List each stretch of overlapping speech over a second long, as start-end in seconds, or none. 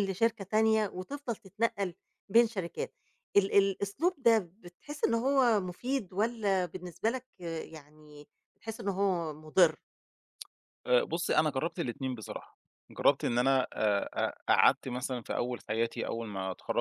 none